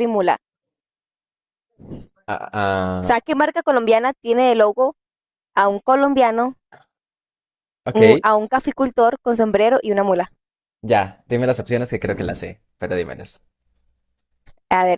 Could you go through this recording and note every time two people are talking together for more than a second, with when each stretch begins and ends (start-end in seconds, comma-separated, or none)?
none